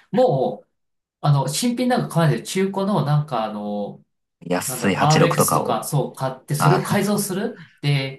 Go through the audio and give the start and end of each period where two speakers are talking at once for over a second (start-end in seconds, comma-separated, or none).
4.7-5.9